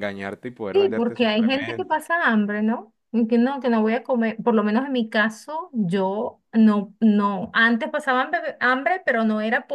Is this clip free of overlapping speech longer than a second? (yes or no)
no